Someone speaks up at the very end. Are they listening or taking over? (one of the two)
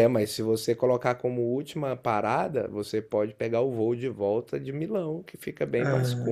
listening